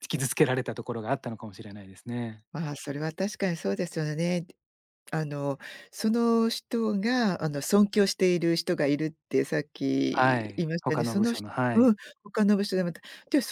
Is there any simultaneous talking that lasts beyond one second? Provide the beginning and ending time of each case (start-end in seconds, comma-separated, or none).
10.1-11.9